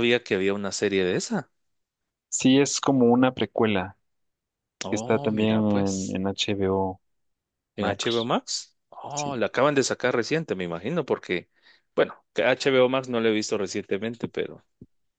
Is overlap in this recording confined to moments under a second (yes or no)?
no